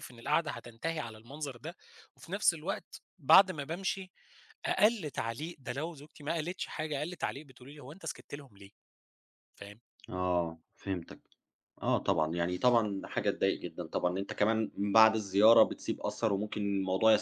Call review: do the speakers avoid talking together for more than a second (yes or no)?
yes